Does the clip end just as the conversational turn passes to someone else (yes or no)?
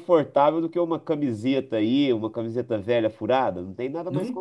yes